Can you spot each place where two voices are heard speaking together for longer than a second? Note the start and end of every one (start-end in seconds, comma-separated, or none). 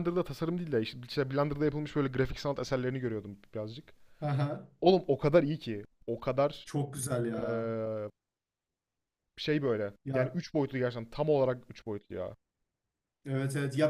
none